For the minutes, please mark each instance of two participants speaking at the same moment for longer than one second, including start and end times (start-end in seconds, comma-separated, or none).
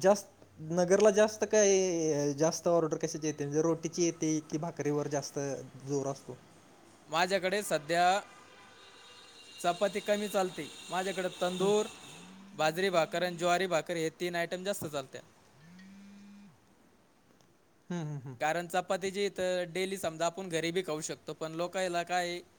none